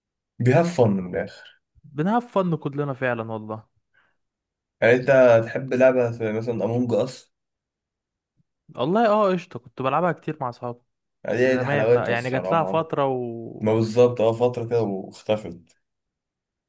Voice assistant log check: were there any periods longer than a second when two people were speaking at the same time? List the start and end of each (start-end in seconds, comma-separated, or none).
11.3-12.9